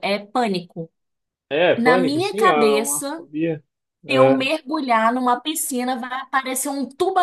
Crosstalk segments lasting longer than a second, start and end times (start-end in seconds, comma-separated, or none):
1.8-3.2